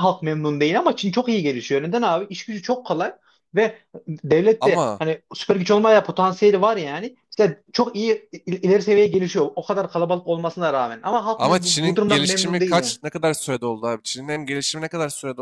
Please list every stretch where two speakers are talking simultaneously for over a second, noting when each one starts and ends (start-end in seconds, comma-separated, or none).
11.3-13.0